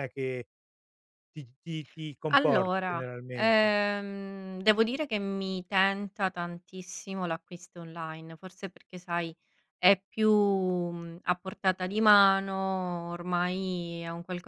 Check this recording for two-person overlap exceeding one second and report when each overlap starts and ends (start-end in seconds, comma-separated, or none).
2.3-3.8